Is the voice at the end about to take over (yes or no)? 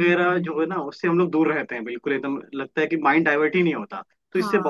no